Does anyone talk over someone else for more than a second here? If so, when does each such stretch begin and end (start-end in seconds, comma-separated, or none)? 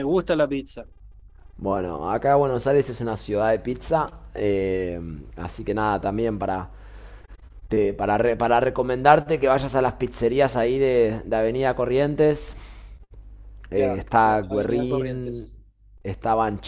13.7-15.5